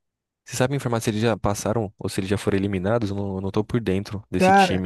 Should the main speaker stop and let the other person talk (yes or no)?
yes